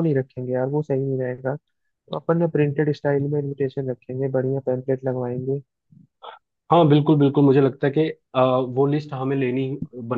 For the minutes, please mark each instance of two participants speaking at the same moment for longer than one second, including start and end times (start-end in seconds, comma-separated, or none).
none